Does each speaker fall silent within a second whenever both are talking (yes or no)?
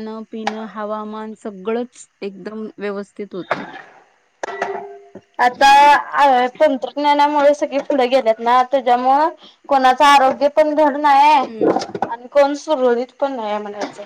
yes